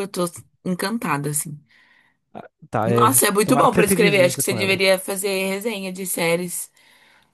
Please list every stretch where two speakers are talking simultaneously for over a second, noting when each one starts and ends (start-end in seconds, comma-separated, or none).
2.9-4.8